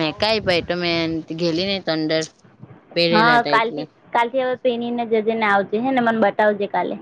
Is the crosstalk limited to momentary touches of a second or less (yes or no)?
yes